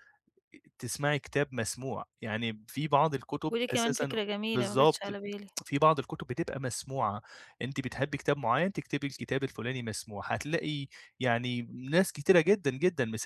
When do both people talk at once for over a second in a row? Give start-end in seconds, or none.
3.5-5.2